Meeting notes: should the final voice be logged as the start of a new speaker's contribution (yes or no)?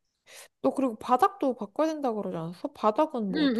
yes